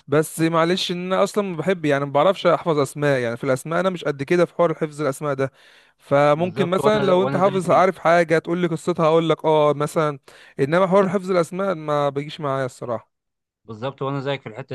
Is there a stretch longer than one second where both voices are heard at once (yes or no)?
yes